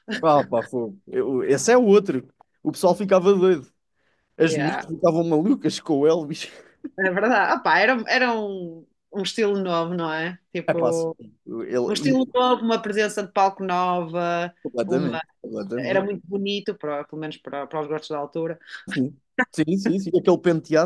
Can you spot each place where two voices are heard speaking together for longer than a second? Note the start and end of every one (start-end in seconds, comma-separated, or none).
none